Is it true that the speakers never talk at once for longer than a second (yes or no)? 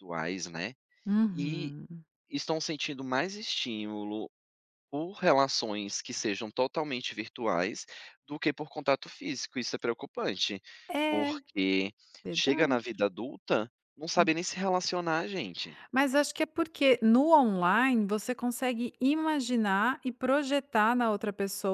yes